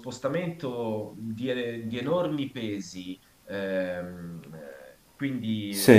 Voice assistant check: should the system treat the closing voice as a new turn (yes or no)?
no